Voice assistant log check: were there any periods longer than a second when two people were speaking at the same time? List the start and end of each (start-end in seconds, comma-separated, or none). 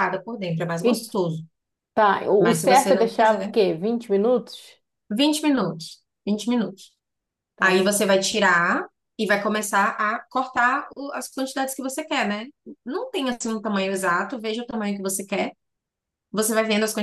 2.4-3.6